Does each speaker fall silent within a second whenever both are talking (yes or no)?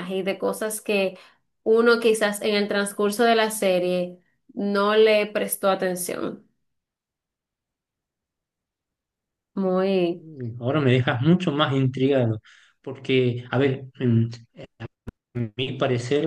yes